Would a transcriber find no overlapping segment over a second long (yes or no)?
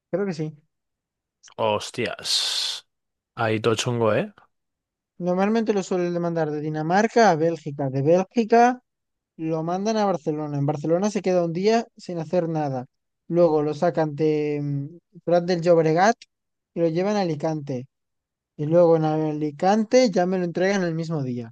yes